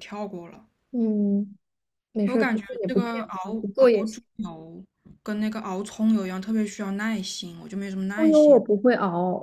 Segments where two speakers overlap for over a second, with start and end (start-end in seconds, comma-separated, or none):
2.2-4.2